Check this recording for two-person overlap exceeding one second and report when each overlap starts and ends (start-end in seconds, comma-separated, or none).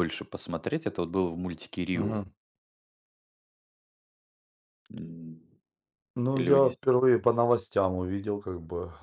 none